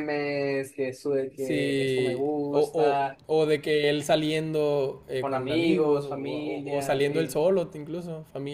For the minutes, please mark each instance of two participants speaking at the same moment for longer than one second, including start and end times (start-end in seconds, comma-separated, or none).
1.4-2.7, 5.2-7.4